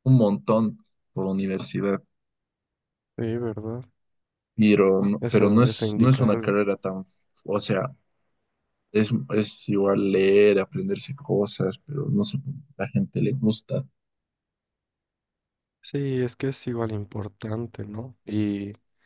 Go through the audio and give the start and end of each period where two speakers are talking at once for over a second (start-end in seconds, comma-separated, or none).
5.2-6.6